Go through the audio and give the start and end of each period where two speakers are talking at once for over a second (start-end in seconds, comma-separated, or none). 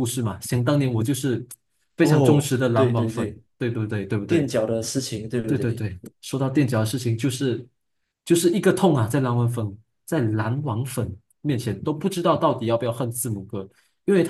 2.0-3.4